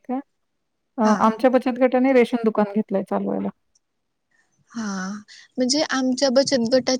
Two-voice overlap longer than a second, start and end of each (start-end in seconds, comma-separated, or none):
none